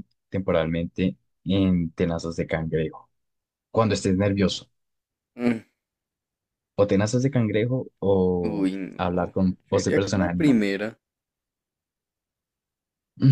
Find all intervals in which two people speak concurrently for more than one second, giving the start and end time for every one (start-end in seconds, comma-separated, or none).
8.4-10.6